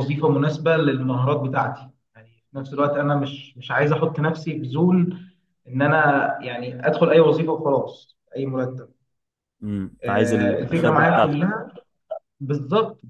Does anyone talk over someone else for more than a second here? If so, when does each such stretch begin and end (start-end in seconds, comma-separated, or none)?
10.0-11.5